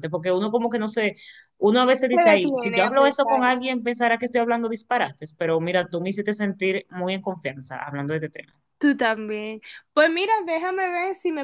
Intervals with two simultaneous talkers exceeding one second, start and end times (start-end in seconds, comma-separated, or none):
2.1-3.4